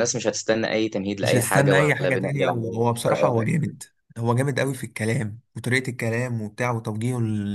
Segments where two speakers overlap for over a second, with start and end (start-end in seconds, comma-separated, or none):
1.2-3.7